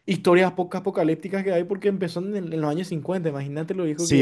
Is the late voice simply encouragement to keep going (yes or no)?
no